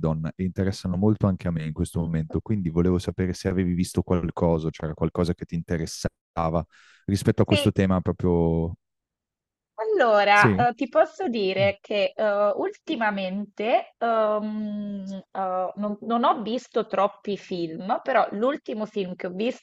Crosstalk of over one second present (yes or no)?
no